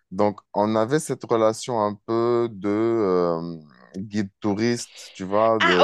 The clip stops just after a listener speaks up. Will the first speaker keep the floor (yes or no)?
no